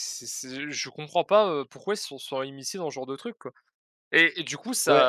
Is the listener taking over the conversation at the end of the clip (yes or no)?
no